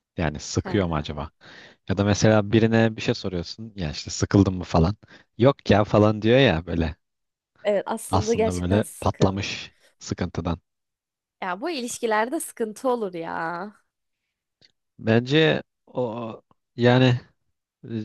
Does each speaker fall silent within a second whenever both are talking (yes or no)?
no